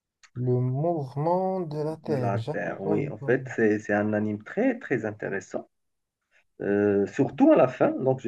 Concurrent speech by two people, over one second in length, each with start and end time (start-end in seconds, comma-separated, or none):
2.0-3.5